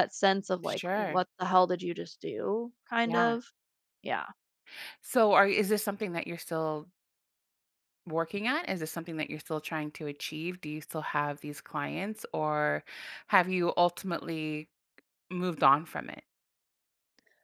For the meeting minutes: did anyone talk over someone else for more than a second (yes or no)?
no